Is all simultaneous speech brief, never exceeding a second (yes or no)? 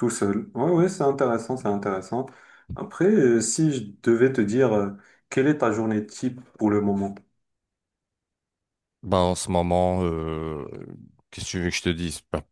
yes